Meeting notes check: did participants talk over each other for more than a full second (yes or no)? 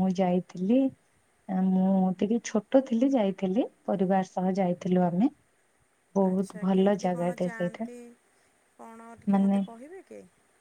yes